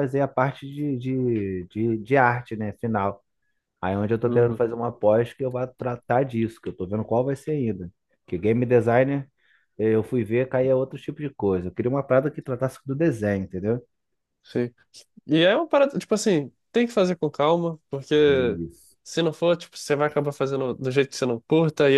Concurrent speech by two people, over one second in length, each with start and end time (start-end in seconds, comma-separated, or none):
none